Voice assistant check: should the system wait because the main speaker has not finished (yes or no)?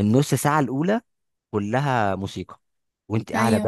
yes